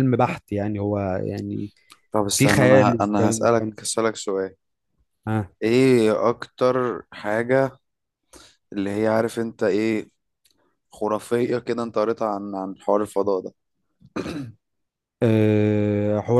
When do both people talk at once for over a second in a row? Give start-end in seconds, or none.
2.3-3.8